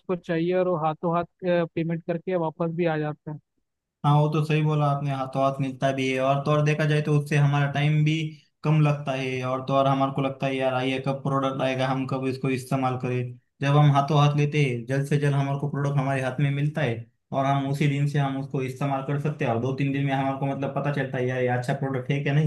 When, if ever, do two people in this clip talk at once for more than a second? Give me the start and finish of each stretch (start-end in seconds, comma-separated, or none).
none